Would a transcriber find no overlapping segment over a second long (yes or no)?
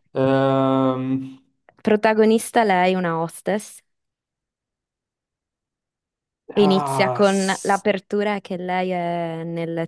no